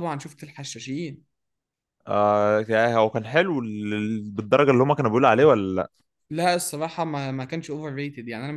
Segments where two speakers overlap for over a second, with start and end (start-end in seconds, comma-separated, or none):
none